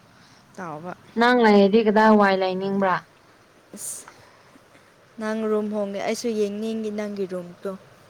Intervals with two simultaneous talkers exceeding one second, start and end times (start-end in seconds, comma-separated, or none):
none